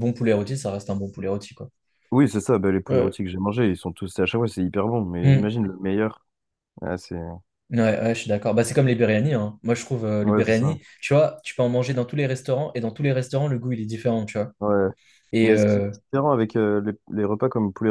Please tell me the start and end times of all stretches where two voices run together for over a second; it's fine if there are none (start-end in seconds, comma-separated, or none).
none